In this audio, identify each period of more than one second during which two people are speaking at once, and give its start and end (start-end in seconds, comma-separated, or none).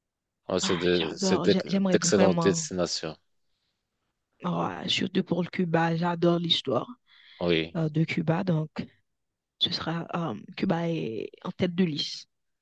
0.6-2.7